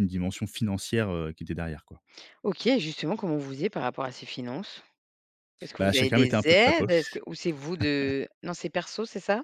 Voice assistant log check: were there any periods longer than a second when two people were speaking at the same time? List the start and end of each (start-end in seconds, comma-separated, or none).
5.8-7.2